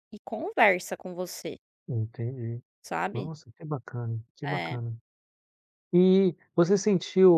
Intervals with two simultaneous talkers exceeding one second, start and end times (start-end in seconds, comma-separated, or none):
none